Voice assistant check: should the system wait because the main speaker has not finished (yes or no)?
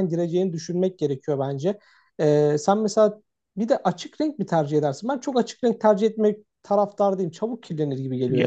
no